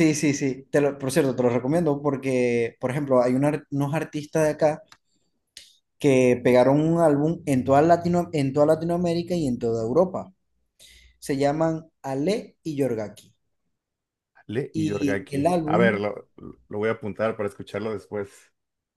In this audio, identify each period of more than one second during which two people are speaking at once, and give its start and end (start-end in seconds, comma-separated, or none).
14.7-16.0